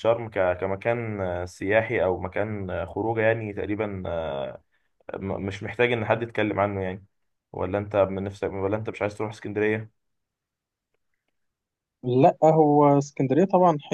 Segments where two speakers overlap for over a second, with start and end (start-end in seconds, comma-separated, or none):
none